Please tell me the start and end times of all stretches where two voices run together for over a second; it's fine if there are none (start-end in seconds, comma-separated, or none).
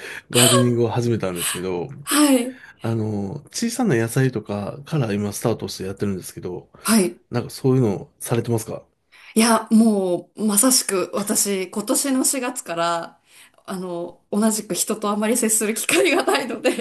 none